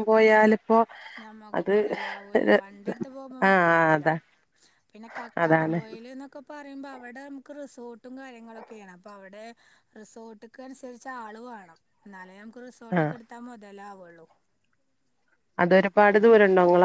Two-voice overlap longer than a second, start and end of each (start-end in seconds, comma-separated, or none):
none